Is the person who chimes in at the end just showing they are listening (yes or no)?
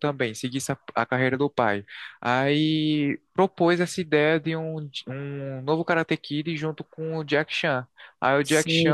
no